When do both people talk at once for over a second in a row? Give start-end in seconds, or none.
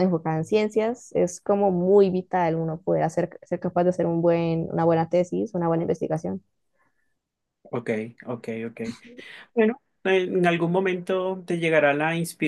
none